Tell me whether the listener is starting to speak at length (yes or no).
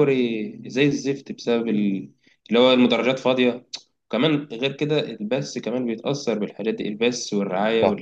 no